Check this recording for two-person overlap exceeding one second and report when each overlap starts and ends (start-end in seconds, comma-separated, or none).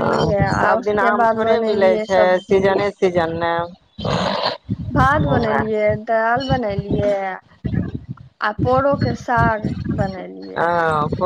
0.5-2.7